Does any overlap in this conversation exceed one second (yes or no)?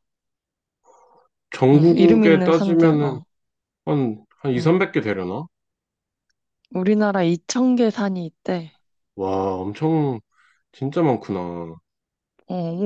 yes